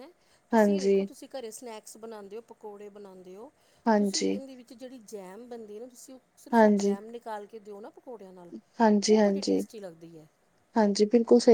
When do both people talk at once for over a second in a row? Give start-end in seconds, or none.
none